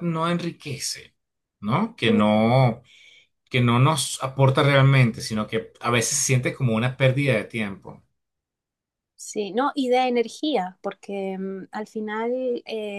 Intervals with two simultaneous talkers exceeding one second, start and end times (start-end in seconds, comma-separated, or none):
none